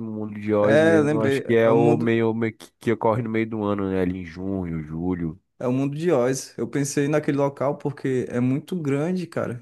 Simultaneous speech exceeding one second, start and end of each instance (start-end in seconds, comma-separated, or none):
0.6-2.1